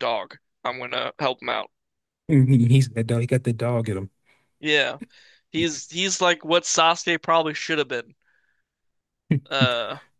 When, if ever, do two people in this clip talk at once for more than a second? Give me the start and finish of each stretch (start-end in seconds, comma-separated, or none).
none